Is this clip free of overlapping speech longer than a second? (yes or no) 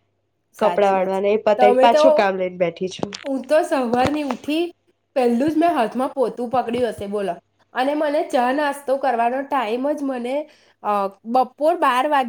no